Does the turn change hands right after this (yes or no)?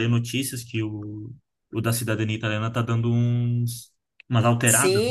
yes